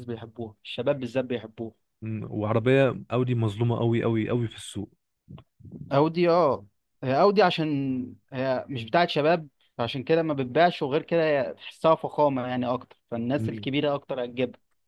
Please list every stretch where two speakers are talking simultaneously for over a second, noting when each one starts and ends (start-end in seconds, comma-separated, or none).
none